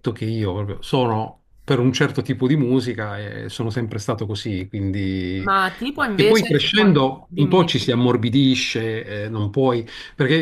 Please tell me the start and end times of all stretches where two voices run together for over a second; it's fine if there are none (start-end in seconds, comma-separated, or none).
6.1-7.9